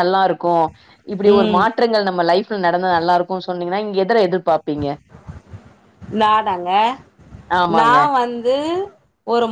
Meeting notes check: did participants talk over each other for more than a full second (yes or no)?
no